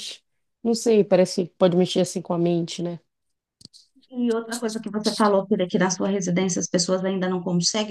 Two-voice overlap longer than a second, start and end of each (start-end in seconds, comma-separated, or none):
none